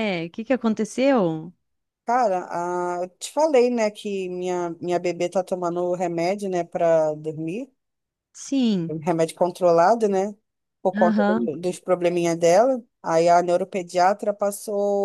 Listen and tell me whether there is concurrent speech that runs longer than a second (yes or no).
no